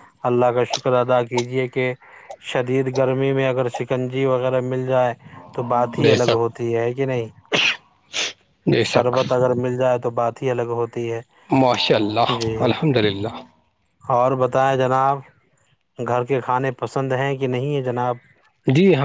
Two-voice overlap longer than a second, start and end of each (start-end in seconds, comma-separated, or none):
none